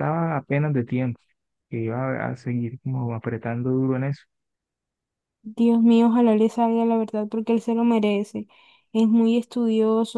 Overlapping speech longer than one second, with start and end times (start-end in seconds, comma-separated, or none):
none